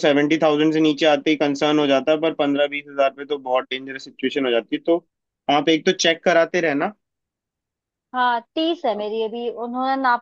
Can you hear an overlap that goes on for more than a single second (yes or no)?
no